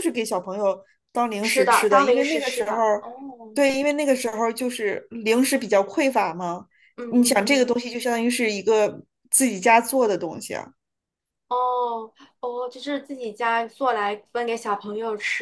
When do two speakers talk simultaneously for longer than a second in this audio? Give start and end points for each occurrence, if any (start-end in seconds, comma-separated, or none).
1.4-2.8